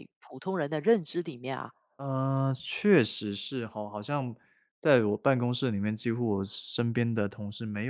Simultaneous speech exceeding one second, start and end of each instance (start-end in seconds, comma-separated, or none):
none